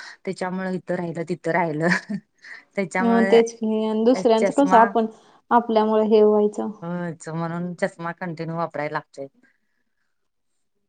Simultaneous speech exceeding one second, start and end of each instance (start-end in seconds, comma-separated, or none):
none